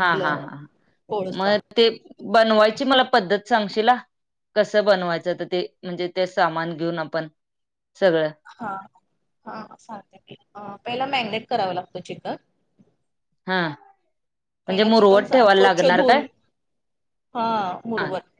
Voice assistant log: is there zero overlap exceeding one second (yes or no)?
no